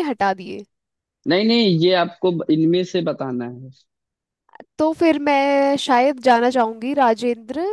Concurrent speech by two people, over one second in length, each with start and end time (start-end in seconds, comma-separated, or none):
none